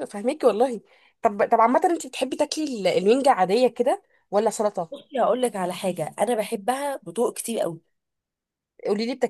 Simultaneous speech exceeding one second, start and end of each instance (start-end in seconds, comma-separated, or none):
none